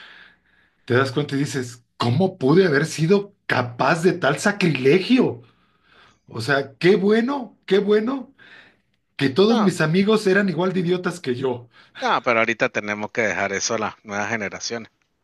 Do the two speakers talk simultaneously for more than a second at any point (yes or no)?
no